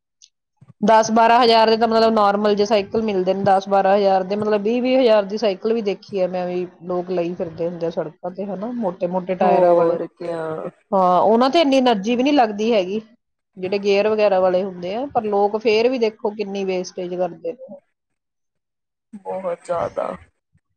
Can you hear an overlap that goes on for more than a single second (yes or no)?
no